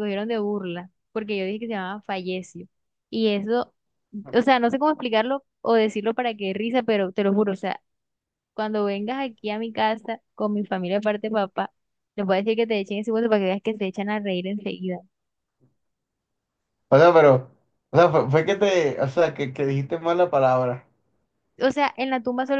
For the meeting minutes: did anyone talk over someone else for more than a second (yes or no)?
no